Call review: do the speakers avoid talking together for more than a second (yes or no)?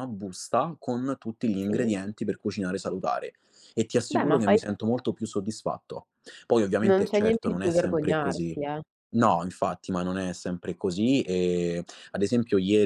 no